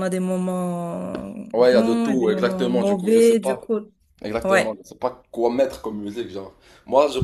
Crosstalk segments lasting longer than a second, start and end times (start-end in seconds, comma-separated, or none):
1.5-3.6